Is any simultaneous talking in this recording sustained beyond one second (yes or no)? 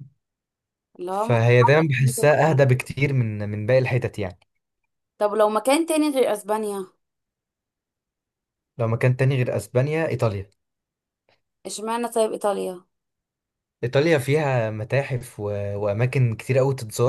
yes